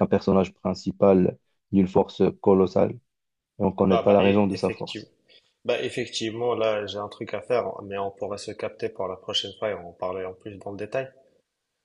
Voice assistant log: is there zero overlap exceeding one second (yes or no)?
no